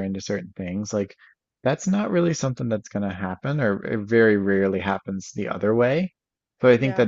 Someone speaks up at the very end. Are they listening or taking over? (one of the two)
listening